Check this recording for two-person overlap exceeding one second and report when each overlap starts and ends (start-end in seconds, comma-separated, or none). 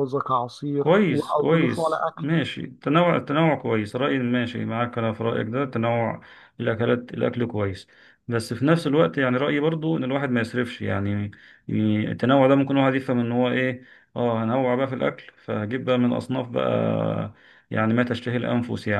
0.8-2.2